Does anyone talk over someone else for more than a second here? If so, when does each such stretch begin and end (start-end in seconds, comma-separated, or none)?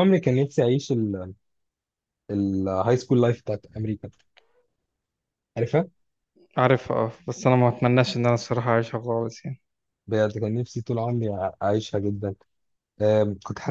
none